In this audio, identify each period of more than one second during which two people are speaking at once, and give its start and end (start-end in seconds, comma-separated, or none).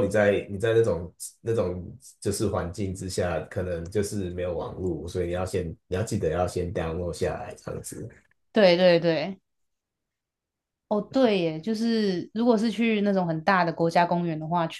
none